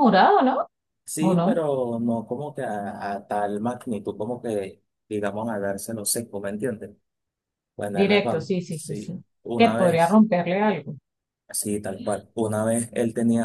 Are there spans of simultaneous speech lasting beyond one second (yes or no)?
yes